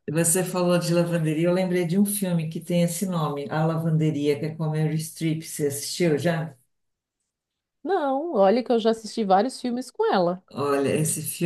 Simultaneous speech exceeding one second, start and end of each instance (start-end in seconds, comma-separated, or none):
none